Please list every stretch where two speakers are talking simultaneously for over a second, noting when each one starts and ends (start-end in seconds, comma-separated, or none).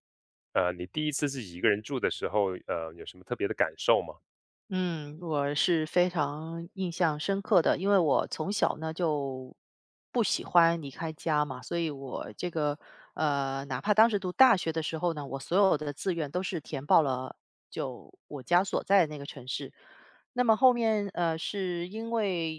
none